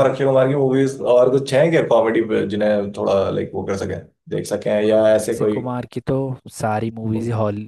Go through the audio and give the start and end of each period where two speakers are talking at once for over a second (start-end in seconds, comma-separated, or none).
none